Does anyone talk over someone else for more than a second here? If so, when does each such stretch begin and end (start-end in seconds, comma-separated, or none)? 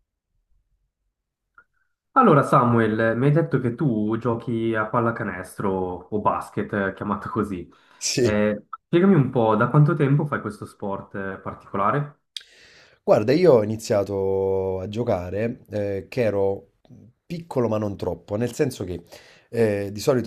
none